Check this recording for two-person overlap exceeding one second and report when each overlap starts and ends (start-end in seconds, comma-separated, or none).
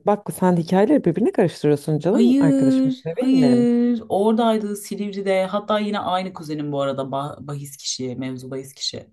2.1-3.7